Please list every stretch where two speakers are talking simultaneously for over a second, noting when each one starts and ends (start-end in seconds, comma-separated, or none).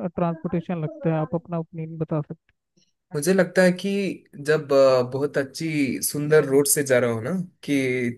none